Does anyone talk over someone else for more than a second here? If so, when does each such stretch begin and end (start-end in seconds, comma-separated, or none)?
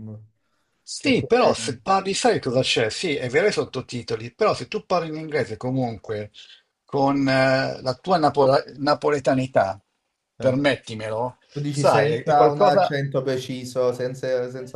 11.5-13.0